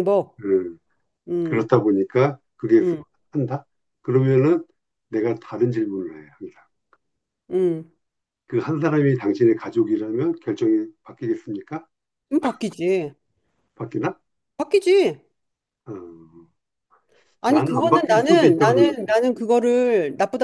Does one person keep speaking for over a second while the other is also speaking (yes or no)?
yes